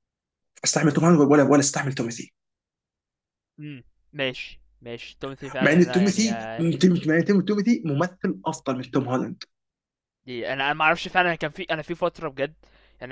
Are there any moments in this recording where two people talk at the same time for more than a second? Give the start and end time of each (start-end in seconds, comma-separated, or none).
5.6-6.8